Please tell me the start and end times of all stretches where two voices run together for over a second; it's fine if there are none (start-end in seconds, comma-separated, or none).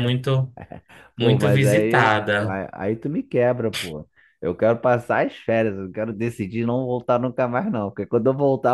1.1-2.6